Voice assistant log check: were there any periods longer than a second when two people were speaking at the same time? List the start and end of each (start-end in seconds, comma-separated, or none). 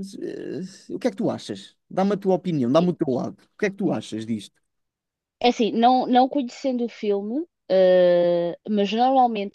none